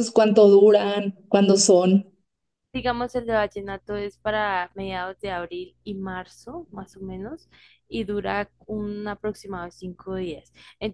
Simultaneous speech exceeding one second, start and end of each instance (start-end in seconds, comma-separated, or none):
none